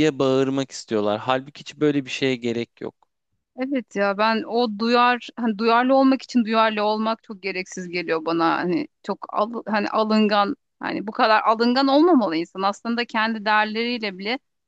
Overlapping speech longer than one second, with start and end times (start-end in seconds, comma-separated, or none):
none